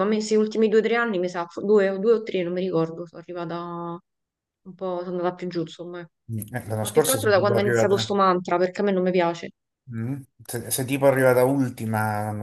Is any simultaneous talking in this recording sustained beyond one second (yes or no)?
yes